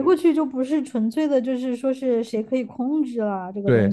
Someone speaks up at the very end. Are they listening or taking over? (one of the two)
taking over